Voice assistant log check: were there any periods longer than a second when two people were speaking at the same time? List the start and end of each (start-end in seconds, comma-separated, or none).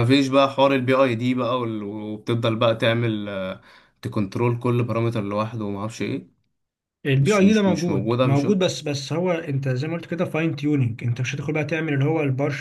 7.2-8.6